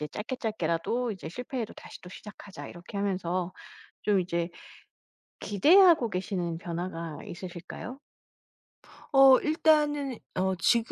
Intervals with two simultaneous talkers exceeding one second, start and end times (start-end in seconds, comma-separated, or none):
none